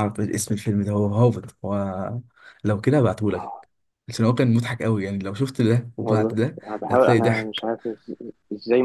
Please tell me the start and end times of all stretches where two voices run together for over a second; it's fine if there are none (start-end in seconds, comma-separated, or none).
6.0-7.7